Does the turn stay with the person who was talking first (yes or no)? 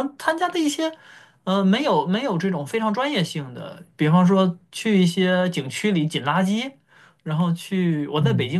yes